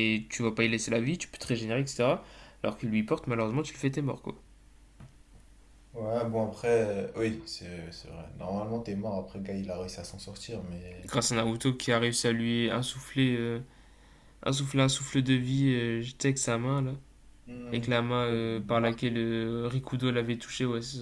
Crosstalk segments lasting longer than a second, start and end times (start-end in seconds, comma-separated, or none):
none